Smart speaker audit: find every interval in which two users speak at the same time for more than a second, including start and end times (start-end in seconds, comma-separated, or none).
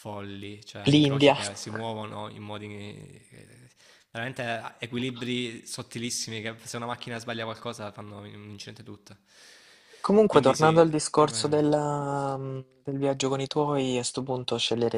10.3-11.6